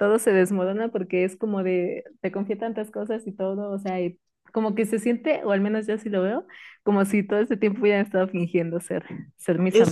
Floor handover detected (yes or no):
yes